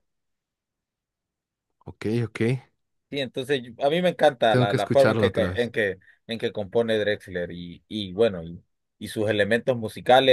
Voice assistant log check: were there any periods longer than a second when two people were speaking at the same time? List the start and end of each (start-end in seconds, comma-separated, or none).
4.5-5.7